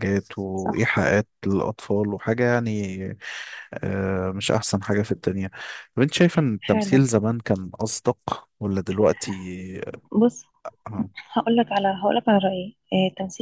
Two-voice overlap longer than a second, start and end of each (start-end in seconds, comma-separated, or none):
none